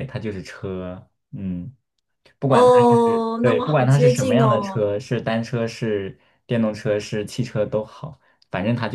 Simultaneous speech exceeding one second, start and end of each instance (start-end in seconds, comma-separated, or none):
3.4-4.9